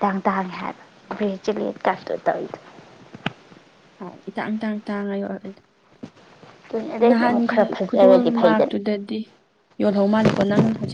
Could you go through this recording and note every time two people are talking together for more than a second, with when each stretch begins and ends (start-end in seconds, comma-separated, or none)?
7.1-8.7